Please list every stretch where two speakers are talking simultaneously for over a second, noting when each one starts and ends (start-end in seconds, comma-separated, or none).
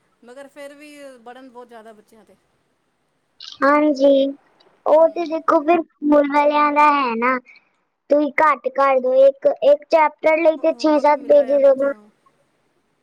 10.6-11.9